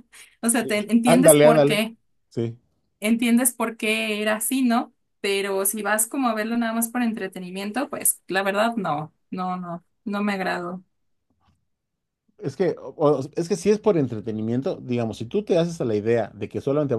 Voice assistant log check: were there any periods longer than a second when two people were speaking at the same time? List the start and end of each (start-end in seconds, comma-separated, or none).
0.5-1.8